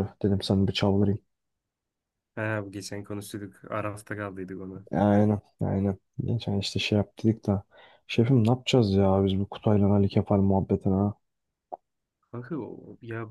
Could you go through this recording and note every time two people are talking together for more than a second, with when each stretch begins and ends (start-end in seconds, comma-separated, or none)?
none